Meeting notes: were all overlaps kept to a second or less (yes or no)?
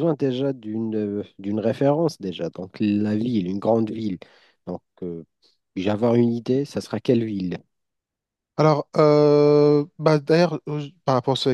yes